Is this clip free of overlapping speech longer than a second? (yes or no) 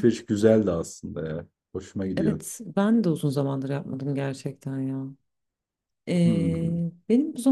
yes